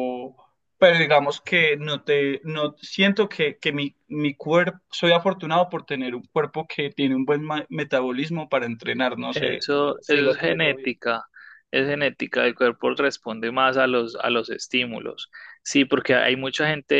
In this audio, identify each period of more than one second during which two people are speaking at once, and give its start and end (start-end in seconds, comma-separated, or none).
9.3-10.9